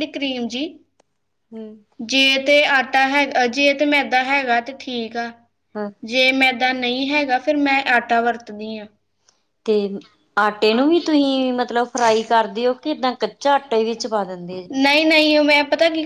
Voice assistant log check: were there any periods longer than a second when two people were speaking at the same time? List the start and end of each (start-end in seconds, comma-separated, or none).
none